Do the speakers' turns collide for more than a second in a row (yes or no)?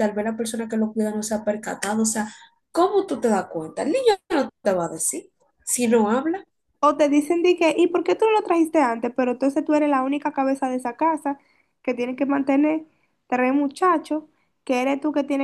no